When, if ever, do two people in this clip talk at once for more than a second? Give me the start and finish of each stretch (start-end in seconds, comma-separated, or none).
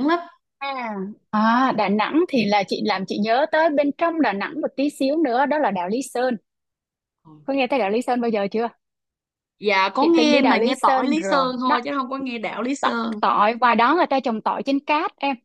10.0-11.8